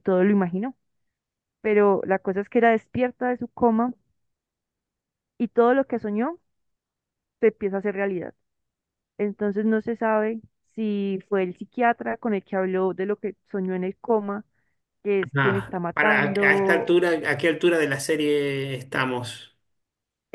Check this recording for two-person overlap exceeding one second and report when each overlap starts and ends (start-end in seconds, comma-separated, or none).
15.3-17.0